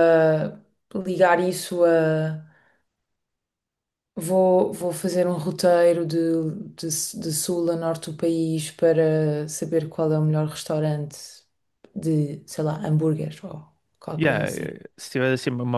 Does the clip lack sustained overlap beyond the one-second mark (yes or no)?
yes